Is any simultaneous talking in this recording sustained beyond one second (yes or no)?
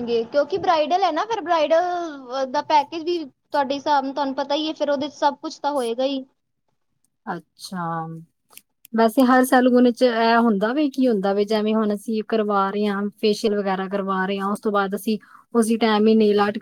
no